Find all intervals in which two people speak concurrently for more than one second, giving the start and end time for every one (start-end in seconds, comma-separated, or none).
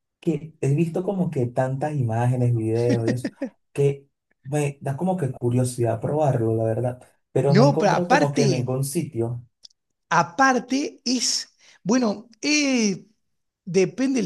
7.5-8.7